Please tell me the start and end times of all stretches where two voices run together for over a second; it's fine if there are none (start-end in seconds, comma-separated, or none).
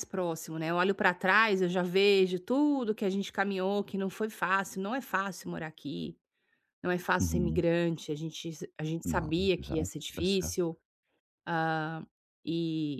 9.0-10.8